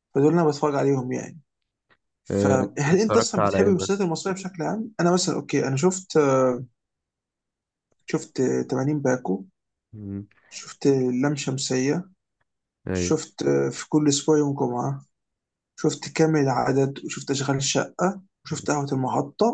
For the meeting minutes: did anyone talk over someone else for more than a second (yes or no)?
yes